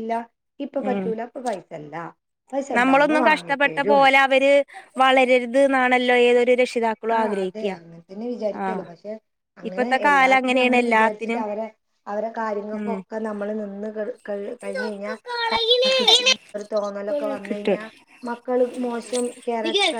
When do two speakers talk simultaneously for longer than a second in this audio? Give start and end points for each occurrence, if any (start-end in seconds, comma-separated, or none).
9.7-11.4